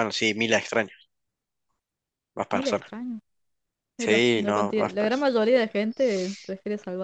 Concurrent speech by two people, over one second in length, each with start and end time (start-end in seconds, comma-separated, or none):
4.0-5.3